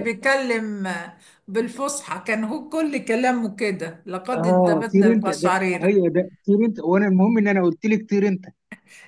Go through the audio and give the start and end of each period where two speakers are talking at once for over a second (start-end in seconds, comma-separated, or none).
4.3-6.0